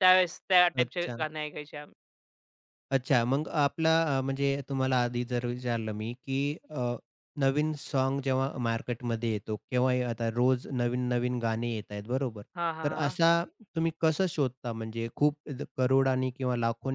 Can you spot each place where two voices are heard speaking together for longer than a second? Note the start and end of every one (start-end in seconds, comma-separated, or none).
none